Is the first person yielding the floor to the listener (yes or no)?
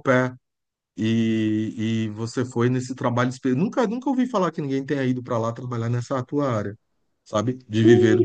yes